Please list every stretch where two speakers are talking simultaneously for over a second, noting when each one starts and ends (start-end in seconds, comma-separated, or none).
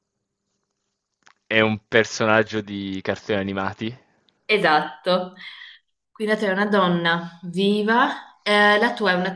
none